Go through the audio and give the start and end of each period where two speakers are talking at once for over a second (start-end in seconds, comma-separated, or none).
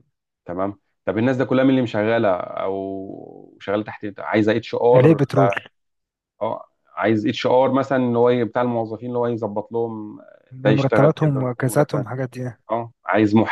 10.8-12.1